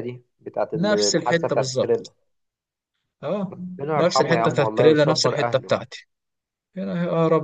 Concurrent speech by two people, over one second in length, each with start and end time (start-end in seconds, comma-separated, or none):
0.8-2.1, 4.0-5.7